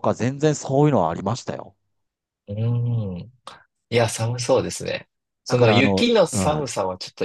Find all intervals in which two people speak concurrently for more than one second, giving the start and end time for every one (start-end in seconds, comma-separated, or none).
5.5-6.7